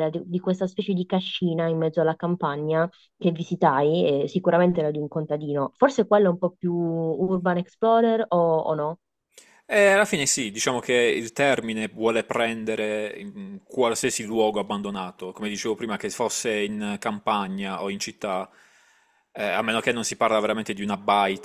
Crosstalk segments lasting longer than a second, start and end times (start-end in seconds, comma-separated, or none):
none